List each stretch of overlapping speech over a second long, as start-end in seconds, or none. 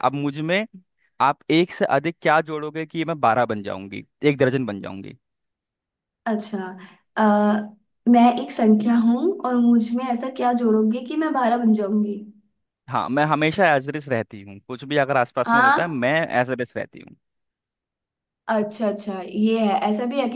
none